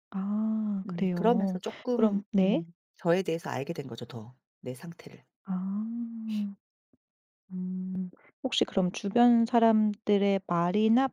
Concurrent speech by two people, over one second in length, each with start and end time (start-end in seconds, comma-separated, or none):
0.9-2.6